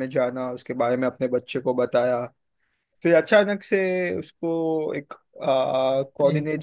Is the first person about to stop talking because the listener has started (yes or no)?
no